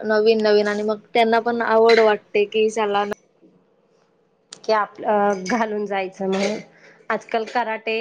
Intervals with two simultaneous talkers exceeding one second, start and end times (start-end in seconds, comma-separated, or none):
none